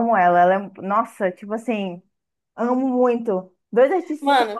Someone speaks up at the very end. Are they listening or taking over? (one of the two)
listening